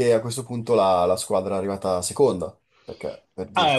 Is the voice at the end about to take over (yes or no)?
yes